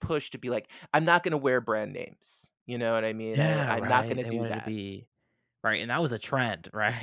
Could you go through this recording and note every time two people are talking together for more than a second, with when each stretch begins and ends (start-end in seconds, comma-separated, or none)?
3.3-4.7